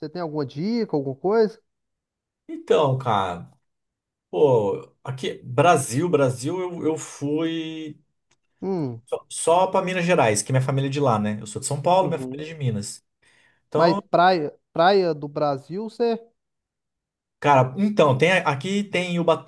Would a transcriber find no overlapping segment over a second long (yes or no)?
yes